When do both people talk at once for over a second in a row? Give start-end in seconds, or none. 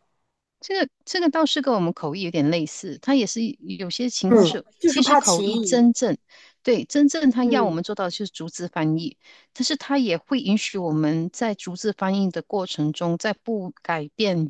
4.3-5.9